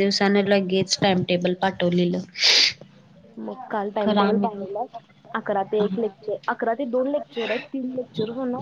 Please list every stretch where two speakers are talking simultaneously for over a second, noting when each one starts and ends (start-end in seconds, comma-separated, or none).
none